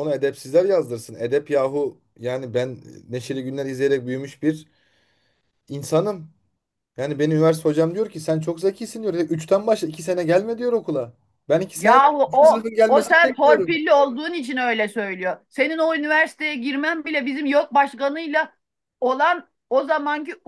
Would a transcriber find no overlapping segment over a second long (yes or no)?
no